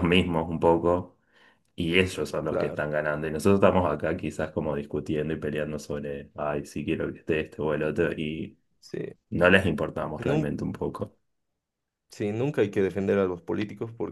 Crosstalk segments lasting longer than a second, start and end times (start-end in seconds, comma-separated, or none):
none